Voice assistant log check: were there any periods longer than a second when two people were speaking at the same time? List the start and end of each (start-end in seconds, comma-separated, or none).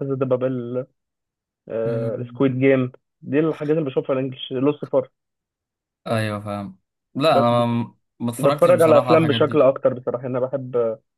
8.4-9.7